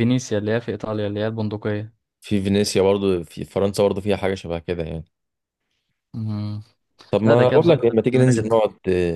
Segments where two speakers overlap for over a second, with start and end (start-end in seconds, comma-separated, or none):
7.2-8.6